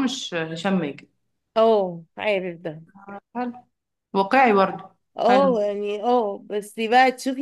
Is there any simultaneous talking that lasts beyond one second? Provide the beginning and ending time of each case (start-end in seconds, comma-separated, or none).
none